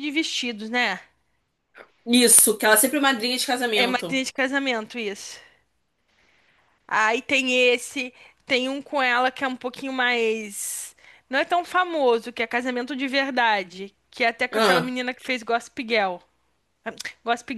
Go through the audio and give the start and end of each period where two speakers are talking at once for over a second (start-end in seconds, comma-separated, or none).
none